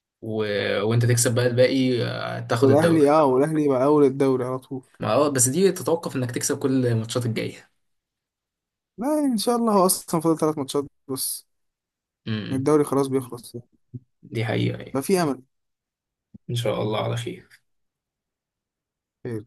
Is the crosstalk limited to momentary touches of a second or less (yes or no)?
yes